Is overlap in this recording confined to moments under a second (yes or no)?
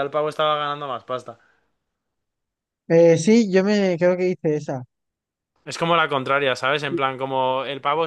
yes